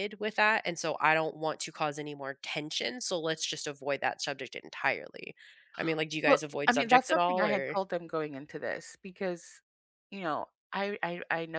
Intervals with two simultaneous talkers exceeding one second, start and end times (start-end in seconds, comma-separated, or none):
6.2-7.8